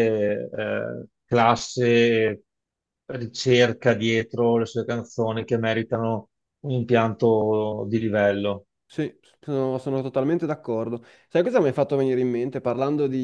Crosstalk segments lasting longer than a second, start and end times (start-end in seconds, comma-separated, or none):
none